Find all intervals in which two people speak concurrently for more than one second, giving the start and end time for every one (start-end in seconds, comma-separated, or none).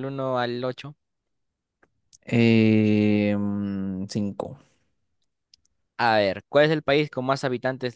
none